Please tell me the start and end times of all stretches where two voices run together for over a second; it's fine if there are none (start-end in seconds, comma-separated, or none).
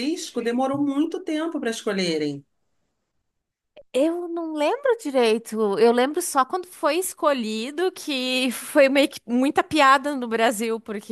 none